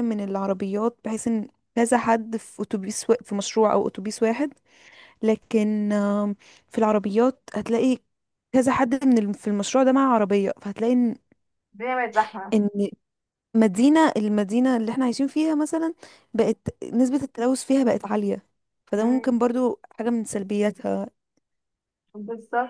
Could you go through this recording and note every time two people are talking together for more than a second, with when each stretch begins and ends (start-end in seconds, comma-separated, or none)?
none